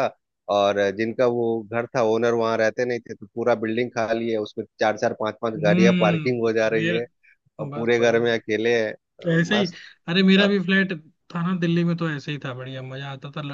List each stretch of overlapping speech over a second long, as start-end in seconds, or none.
5.6-7.0